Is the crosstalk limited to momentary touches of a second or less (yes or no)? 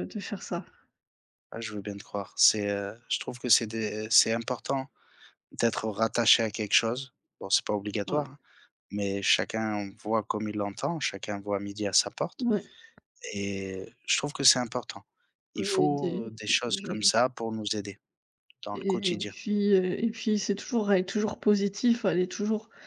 no